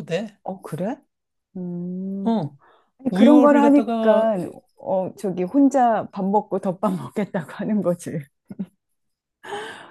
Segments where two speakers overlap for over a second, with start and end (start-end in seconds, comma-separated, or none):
3.1-4.3